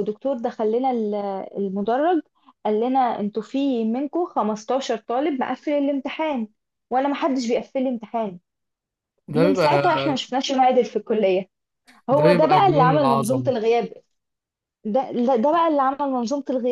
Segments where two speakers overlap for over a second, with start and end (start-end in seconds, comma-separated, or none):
12.2-13.5